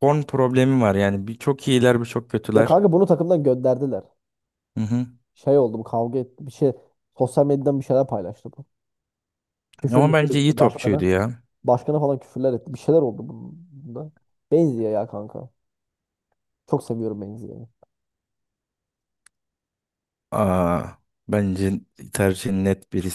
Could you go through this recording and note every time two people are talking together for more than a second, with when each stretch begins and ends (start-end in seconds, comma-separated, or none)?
9.8-11.0